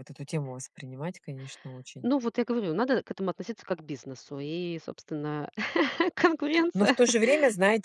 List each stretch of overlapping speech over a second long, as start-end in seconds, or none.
none